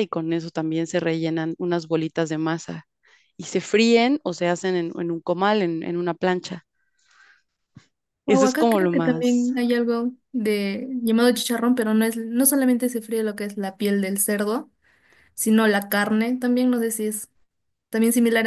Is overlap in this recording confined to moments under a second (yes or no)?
no